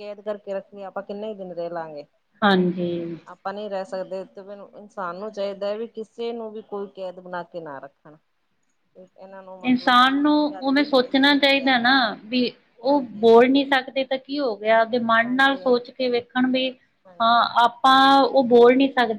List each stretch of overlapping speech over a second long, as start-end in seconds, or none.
9.7-11.6